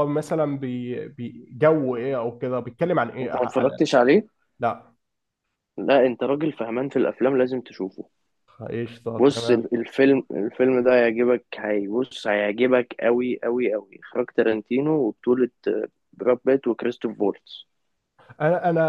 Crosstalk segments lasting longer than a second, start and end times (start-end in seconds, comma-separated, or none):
none